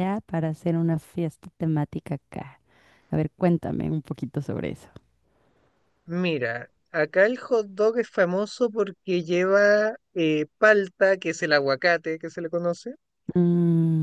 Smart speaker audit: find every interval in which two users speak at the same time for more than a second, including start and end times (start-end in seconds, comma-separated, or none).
none